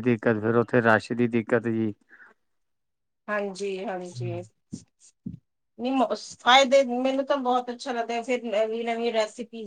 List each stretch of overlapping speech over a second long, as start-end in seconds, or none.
none